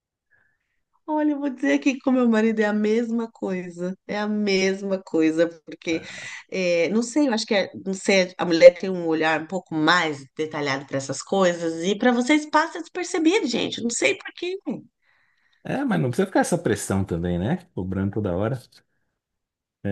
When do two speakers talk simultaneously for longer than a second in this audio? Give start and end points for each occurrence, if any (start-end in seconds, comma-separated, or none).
none